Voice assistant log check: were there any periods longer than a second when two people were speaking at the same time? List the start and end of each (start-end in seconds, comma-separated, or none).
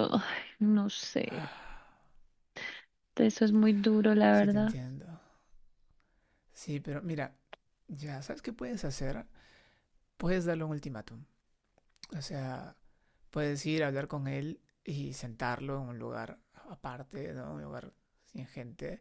none